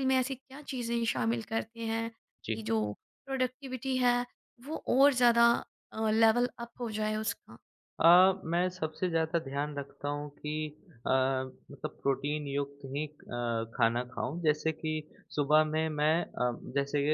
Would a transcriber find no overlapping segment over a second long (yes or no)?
yes